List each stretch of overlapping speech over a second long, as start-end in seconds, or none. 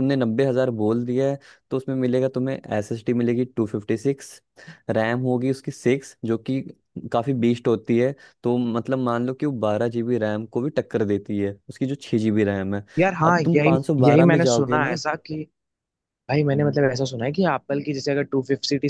13.2-15.0